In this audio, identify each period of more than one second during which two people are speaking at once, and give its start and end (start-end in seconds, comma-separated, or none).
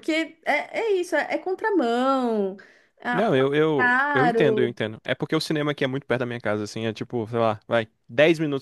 3.1-4.8